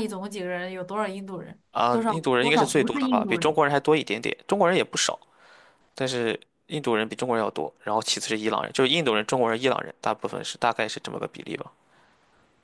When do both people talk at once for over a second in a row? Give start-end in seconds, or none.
1.7-3.5